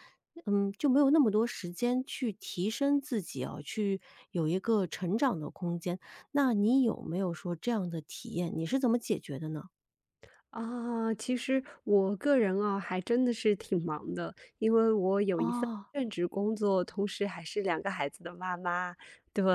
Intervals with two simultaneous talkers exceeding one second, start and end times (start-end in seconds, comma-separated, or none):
none